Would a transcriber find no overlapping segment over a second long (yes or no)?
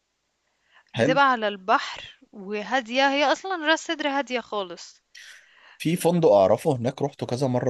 yes